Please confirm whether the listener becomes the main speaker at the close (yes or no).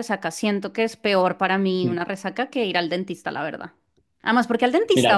no